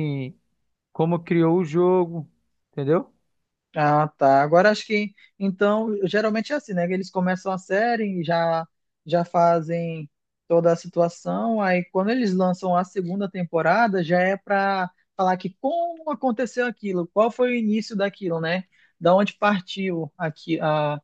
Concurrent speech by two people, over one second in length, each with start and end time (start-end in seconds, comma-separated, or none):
none